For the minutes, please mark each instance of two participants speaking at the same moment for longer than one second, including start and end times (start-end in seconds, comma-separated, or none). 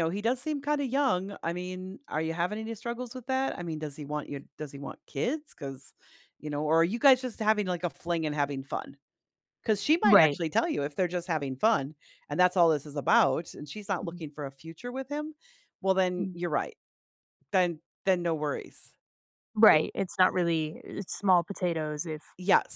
none